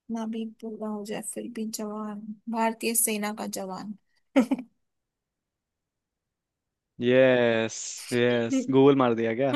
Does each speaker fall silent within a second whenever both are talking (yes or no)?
yes